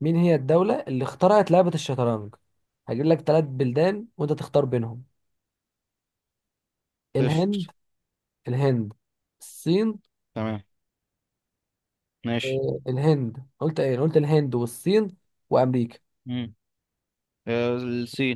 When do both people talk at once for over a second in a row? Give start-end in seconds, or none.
none